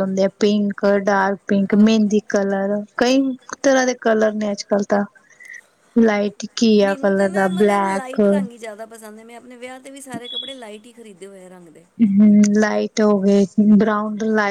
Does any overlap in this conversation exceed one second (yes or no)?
yes